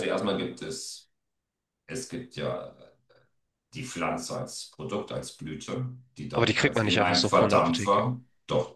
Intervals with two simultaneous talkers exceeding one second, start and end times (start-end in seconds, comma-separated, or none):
6.3-8.1